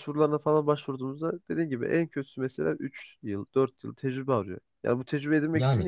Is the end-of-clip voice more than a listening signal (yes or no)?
no